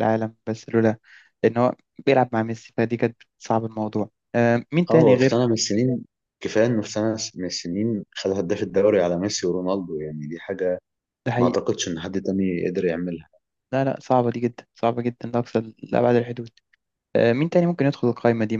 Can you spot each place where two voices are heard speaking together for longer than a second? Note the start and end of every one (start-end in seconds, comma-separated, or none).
none